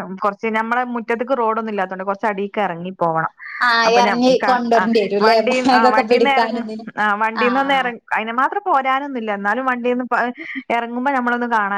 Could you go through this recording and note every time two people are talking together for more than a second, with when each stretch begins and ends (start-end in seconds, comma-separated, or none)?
3.9-6.6